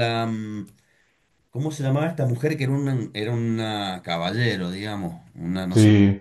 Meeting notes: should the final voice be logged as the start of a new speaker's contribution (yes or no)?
yes